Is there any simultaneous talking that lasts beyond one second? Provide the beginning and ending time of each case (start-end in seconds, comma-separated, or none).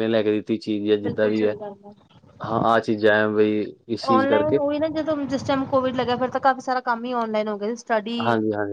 none